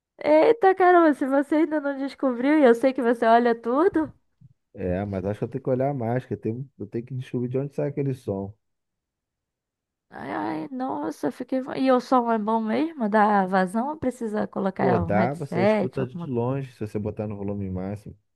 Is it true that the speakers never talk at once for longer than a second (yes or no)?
no